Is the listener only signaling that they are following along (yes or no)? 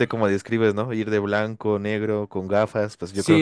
no